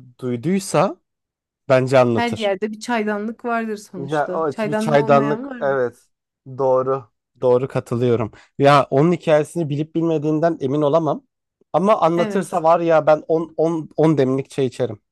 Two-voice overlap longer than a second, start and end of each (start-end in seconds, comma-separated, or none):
4.0-5.8